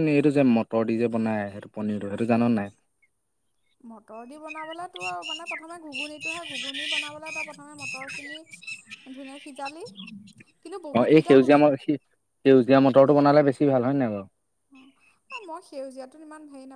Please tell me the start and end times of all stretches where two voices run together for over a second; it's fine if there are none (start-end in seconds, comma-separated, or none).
none